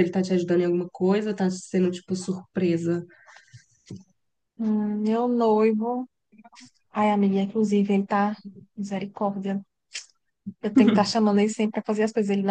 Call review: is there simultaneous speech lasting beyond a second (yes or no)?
no